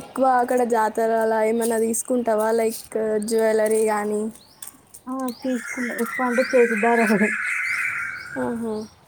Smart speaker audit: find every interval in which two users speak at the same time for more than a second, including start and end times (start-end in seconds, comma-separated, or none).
none